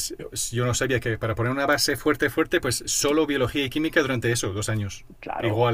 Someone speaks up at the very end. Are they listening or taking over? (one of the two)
listening